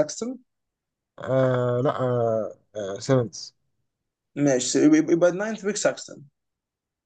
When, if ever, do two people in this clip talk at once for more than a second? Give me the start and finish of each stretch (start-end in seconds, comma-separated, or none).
none